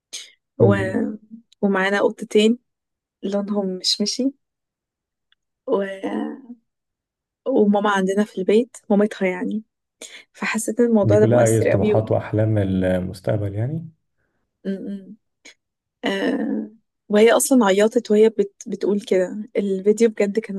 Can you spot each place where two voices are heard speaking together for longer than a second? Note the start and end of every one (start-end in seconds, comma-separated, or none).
11.0-12.2